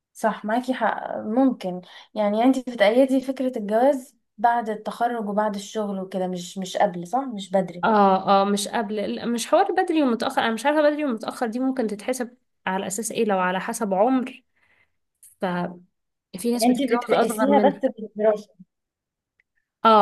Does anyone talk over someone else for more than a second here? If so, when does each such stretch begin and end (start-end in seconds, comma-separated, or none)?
16.5-17.8